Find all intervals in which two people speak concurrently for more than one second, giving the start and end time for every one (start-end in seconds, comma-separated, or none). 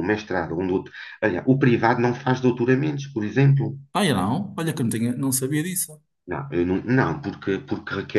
none